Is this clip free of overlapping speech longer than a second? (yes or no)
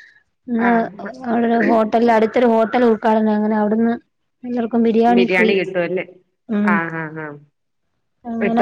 yes